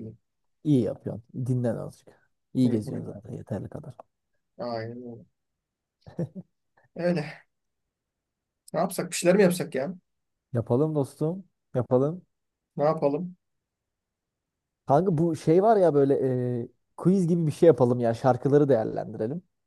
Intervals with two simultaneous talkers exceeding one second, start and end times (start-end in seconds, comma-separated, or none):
none